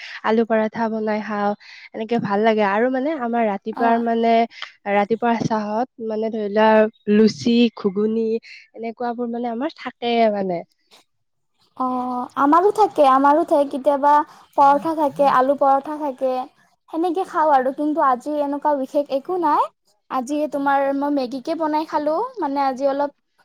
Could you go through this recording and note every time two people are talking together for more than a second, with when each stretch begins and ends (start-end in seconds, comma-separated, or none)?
none